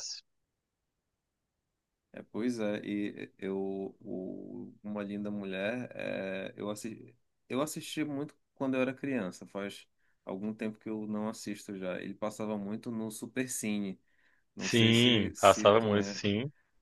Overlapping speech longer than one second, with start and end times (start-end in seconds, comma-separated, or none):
14.6-16.2